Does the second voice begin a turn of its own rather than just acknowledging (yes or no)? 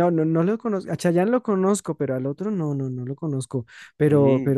no